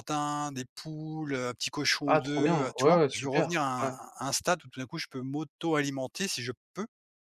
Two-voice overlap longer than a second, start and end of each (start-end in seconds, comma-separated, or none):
2.1-3.9